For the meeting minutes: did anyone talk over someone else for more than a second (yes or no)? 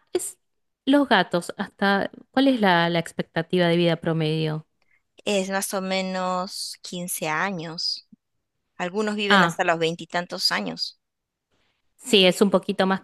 no